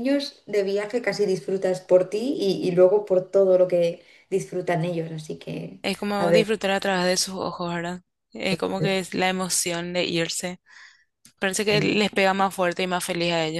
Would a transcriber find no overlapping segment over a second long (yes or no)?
yes